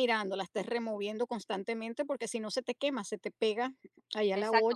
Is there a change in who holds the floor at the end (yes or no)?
yes